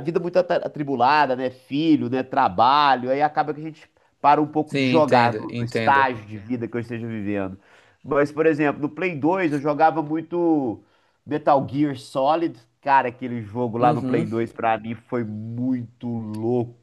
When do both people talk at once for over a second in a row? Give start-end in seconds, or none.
4.7-6.1